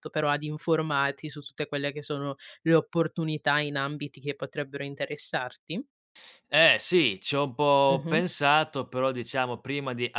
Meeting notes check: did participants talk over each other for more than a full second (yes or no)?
no